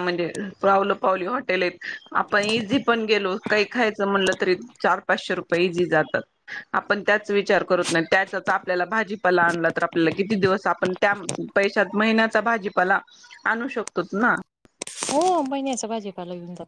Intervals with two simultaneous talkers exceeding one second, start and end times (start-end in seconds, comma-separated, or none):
none